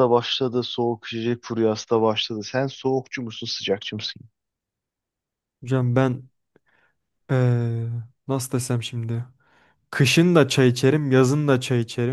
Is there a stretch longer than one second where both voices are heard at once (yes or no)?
no